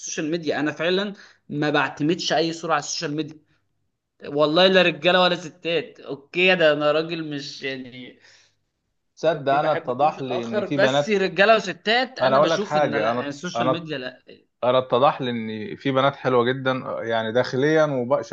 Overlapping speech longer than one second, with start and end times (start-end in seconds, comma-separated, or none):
9.3-11.2, 12.2-13.9